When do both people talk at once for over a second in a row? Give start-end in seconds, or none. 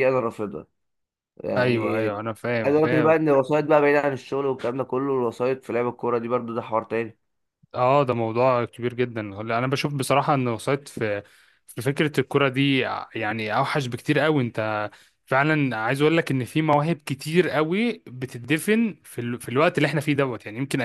none